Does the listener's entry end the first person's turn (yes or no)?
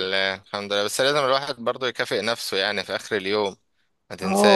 yes